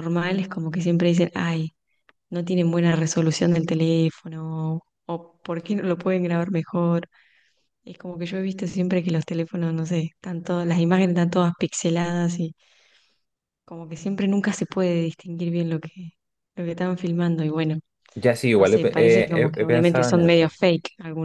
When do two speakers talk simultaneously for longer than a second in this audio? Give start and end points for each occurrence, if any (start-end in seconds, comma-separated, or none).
18.5-20.5